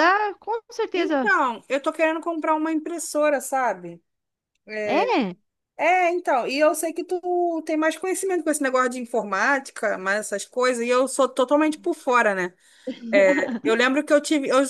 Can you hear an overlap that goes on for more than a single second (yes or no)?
no